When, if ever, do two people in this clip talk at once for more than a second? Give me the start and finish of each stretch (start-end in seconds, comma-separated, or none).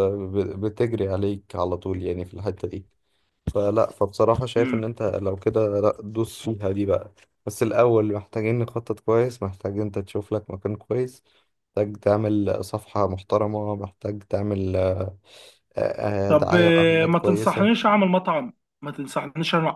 16.3-17.7